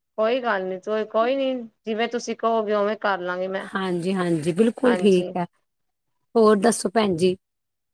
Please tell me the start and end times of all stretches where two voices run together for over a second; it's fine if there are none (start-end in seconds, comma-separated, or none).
none